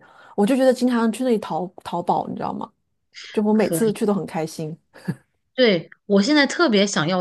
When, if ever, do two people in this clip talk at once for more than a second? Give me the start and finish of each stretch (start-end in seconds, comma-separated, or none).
none